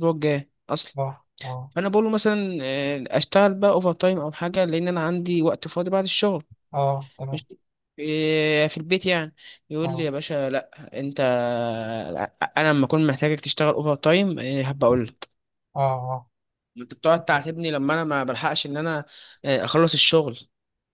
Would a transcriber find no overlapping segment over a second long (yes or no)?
yes